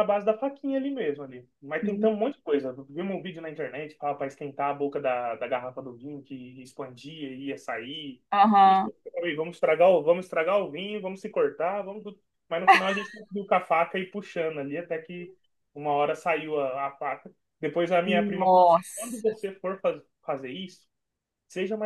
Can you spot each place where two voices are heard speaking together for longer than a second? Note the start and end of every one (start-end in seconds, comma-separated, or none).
18.0-19.3